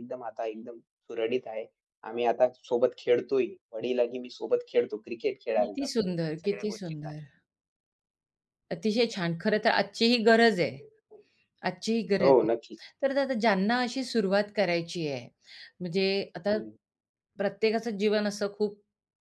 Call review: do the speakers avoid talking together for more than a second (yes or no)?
no